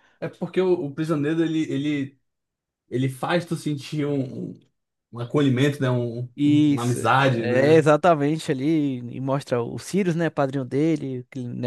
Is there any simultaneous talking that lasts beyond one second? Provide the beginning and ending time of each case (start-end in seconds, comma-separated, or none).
6.4-7.9